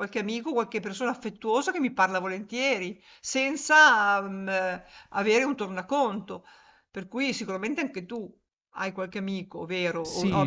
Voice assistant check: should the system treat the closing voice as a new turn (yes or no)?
yes